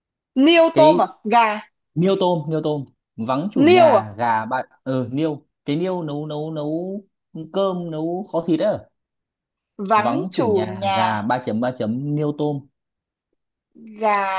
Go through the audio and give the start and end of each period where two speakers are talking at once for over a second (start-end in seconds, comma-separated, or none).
9.9-11.3